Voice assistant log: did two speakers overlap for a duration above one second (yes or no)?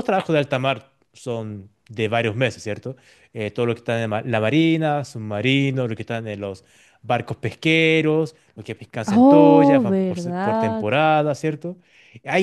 yes